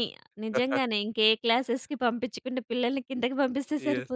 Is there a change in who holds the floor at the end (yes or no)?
yes